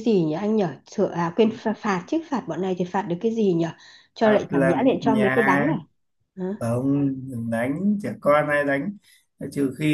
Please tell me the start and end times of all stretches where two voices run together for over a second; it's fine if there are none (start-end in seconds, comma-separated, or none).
4.2-5.8